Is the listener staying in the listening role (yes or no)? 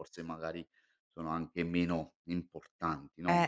no